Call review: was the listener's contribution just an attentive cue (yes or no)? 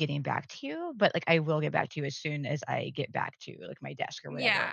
no